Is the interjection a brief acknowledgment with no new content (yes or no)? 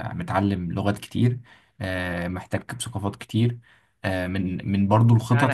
no